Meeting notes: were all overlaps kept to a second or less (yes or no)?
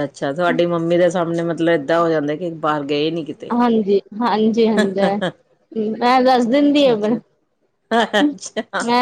yes